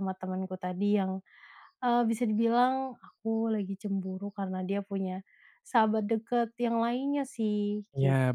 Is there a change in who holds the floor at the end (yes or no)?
yes